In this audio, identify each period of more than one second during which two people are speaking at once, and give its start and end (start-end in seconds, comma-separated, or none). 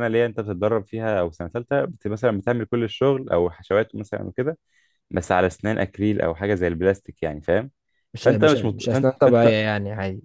8.2-9.6